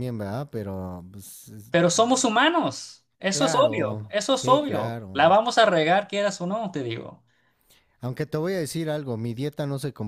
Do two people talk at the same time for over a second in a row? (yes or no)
yes